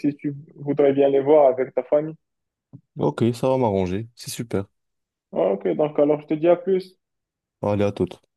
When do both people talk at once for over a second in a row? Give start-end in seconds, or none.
none